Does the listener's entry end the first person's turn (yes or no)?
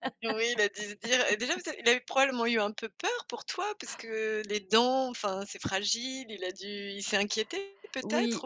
yes